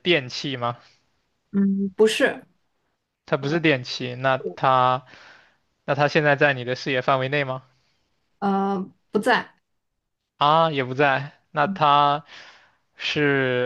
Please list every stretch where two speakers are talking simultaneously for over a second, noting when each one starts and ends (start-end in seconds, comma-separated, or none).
none